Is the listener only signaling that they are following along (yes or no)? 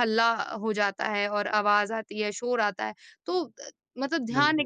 yes